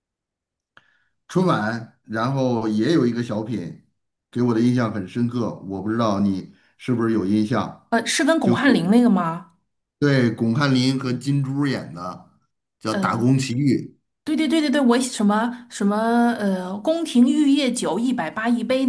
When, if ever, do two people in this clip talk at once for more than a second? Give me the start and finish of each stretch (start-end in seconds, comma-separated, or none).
none